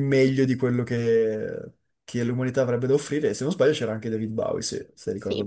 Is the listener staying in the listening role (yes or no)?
no